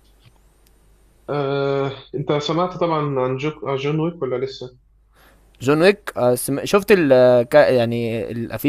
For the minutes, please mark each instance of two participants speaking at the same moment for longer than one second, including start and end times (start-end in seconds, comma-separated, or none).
none